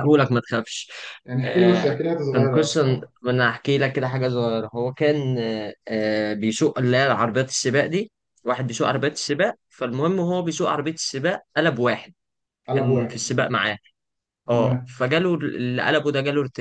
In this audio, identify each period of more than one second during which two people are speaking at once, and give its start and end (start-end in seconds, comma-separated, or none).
1.4-2.8